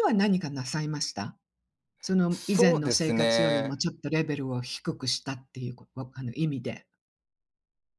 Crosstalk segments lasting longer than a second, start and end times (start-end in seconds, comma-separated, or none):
2.3-3.8